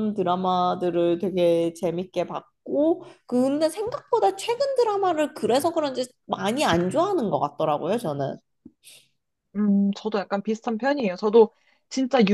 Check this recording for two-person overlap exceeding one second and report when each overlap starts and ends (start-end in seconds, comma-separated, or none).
none